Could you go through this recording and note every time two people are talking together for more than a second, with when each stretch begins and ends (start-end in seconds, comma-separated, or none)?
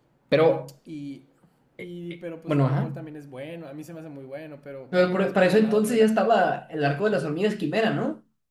4.9-6.2